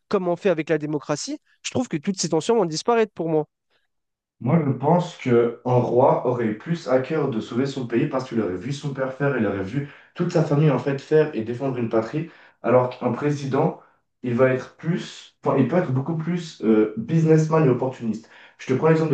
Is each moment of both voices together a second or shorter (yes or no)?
yes